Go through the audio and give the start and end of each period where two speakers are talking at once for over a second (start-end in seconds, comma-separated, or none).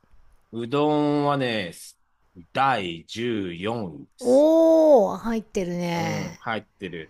none